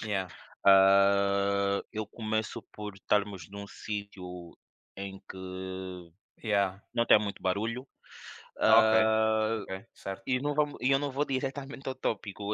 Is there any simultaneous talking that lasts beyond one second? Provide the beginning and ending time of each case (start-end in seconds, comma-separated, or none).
none